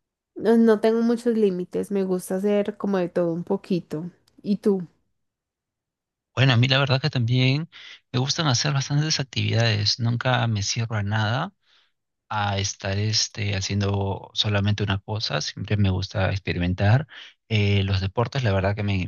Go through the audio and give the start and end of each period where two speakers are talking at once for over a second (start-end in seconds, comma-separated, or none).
none